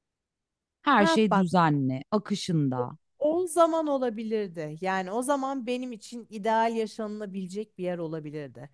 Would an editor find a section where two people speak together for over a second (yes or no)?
no